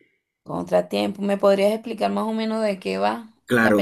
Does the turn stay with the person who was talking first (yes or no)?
no